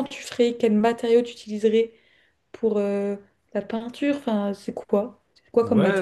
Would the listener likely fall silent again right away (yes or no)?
no